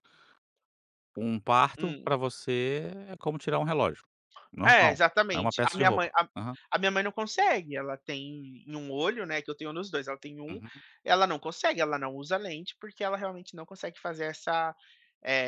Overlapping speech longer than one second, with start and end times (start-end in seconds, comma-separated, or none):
4.7-6.3